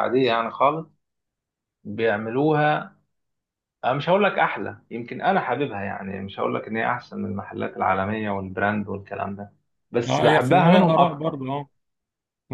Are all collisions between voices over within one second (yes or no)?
no